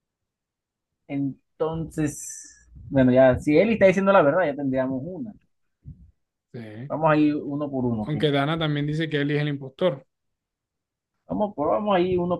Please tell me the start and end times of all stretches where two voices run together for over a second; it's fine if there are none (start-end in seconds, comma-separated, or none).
none